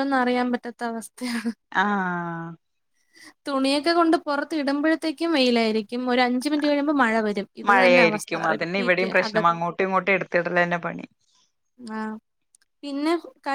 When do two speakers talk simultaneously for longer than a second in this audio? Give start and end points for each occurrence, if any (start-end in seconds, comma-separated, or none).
7.7-9.4